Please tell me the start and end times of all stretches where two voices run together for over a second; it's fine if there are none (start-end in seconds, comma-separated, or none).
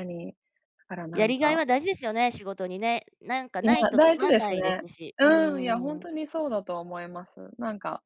3.6-5.3